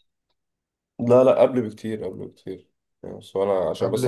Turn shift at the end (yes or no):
no